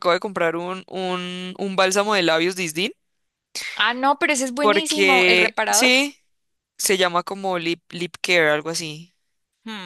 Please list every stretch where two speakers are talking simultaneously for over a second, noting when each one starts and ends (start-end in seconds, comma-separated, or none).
4.6-5.9